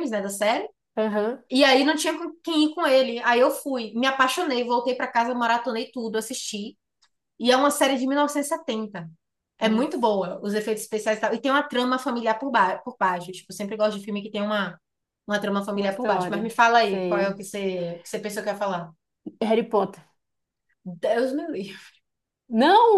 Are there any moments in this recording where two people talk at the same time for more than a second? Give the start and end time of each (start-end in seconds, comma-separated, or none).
15.7-17.4